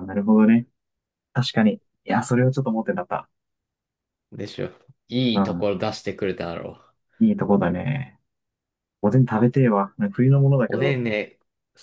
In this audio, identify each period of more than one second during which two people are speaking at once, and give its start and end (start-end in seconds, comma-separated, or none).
none